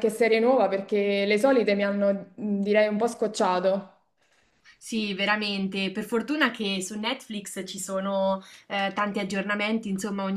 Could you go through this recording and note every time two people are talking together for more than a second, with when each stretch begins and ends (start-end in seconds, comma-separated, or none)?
none